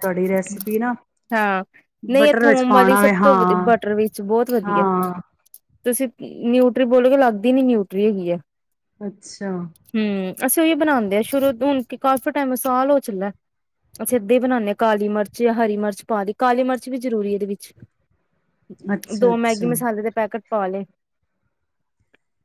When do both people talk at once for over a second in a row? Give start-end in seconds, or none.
2.2-3.7